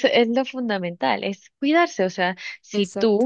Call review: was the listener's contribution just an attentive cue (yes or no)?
yes